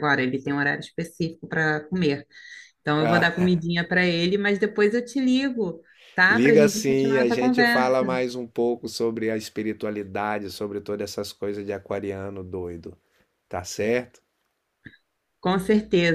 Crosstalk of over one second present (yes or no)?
yes